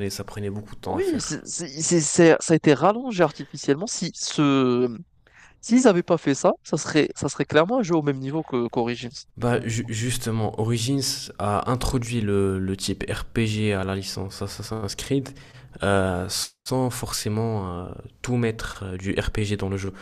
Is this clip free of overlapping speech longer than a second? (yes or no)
yes